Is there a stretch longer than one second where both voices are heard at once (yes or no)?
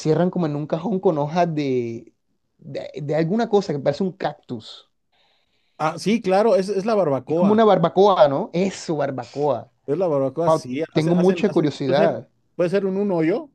yes